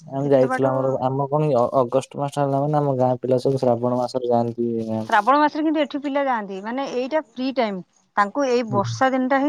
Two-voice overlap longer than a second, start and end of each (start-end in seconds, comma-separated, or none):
none